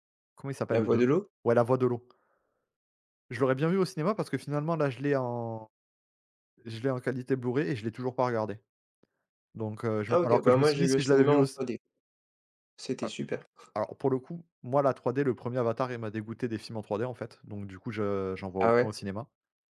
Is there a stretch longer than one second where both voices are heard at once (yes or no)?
yes